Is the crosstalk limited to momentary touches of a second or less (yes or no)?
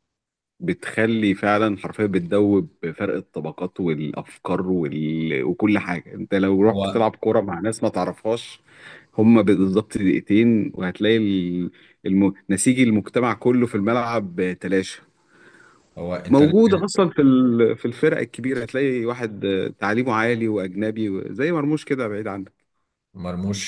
yes